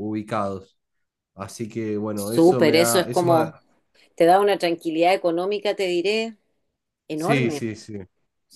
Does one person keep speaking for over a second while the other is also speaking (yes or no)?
yes